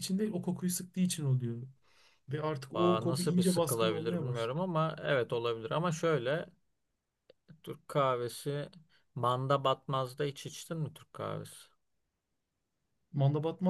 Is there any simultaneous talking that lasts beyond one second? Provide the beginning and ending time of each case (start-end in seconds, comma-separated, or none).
2.7-4.5